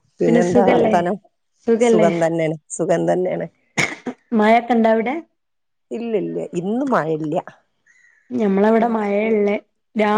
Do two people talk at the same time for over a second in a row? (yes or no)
no